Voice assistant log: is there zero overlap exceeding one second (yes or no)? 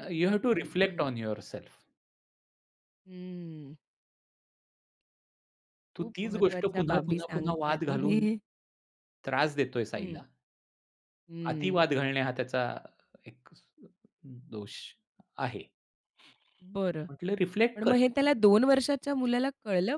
no